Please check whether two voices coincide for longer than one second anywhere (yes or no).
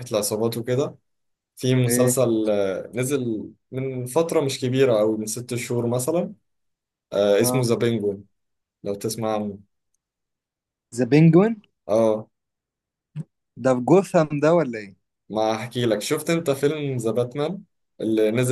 no